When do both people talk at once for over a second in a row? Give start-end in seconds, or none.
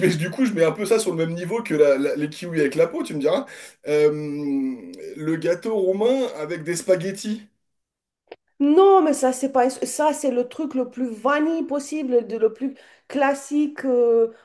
none